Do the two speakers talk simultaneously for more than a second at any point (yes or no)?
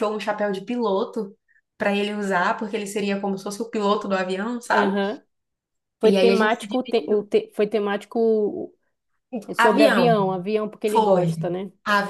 yes